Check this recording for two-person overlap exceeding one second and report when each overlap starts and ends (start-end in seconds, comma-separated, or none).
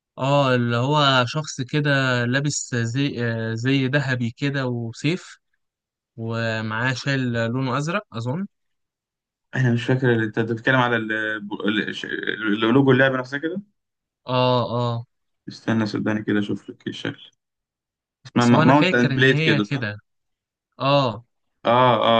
18.4-19.9